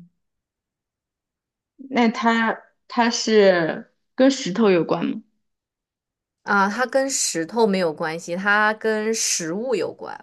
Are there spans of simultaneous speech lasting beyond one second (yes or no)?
no